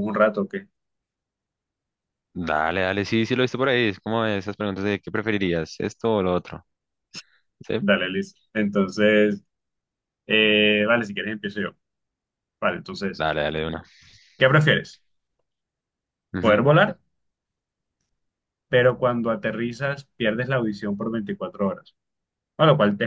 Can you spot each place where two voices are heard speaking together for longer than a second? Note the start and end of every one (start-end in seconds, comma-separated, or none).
none